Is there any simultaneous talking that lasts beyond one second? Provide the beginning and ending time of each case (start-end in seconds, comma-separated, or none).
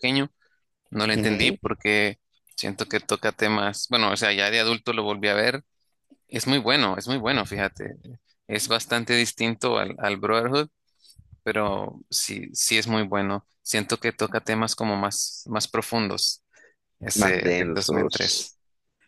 17.1-18.4